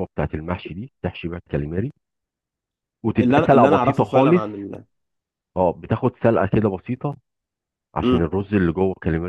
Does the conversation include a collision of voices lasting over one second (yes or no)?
yes